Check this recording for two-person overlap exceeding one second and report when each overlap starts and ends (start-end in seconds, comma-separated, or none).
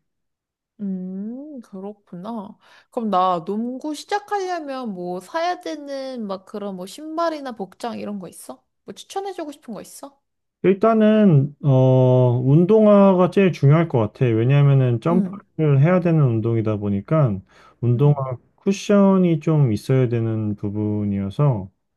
none